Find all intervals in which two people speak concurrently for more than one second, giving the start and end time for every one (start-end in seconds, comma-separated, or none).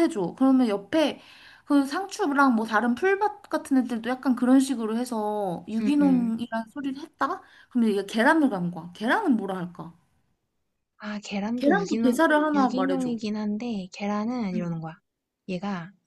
11.5-13.1